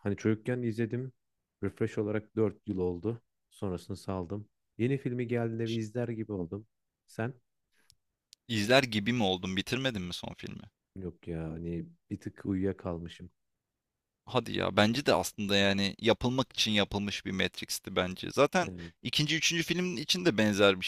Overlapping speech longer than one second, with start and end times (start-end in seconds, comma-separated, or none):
none